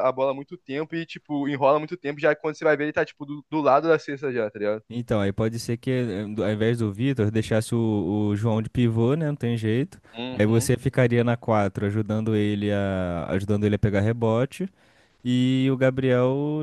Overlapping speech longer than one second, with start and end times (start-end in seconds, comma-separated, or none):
none